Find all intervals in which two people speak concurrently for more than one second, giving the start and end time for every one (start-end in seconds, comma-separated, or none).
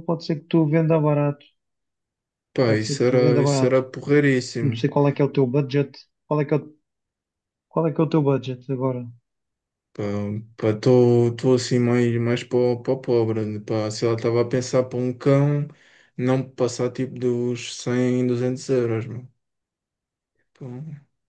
2.6-3.8